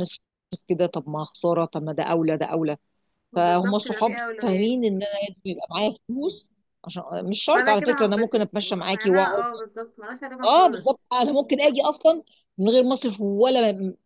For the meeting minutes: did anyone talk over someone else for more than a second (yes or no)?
yes